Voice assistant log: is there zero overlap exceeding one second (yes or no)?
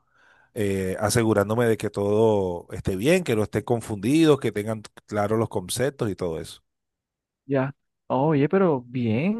yes